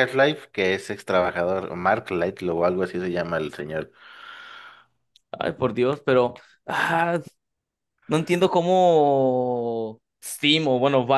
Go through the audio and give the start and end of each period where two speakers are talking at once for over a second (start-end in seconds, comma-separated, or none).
none